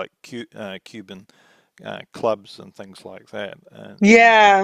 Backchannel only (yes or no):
no